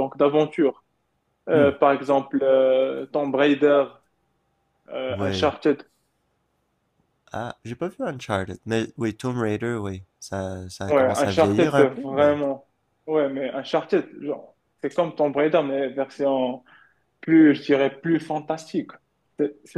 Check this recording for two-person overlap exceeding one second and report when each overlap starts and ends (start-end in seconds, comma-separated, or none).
10.9-12.3